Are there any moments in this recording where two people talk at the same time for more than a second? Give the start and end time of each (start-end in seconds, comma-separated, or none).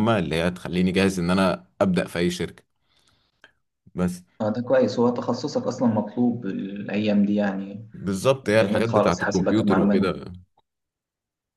8.5-10.1